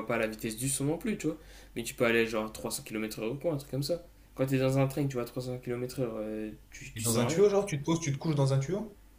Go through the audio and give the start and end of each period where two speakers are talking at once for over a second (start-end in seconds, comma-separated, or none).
none